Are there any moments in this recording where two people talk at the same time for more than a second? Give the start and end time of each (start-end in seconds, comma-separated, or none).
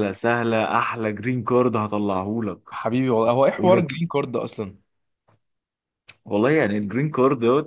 none